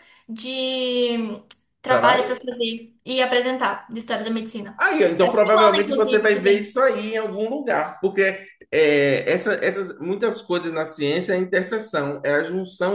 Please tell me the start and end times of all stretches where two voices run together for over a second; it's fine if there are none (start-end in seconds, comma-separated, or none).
4.8-6.7